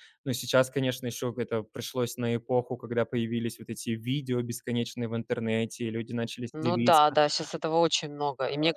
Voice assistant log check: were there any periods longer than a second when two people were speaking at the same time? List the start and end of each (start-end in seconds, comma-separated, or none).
none